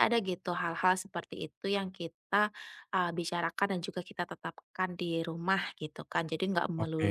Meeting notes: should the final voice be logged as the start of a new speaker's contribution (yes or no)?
no